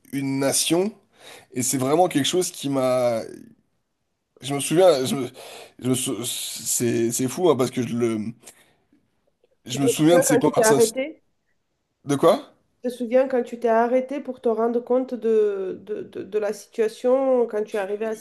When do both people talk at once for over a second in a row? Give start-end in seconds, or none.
9.7-11.0